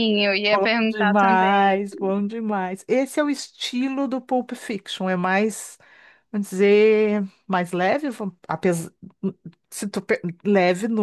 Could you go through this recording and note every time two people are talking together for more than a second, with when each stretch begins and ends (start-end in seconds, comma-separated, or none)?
0.5-1.8